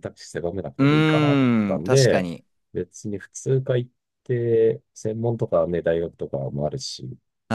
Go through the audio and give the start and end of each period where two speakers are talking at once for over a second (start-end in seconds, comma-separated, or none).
0.8-2.3